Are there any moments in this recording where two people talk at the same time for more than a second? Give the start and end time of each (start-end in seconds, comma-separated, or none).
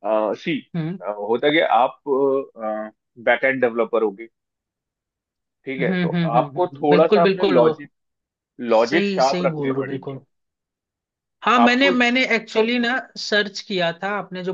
5.8-7.7, 8.8-10.2